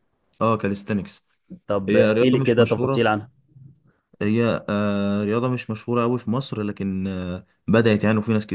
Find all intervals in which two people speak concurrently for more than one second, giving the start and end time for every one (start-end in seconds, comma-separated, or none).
1.9-3.1